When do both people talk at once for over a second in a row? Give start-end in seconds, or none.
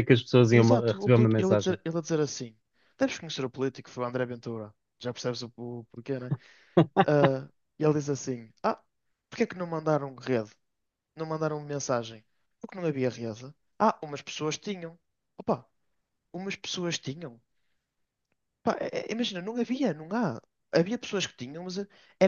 0.5-1.8